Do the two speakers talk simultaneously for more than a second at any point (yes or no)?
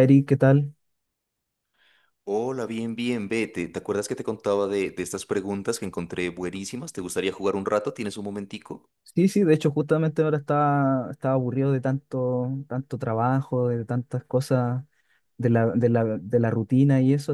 no